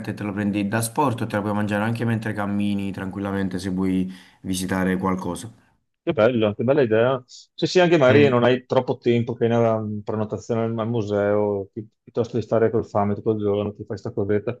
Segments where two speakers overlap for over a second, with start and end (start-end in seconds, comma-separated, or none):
none